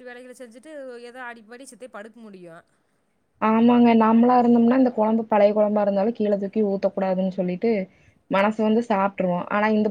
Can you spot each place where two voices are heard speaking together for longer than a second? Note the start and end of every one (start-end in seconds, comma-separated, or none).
none